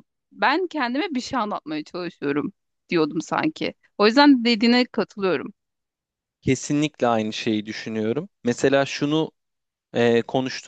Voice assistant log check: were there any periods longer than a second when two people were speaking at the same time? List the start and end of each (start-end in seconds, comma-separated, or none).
none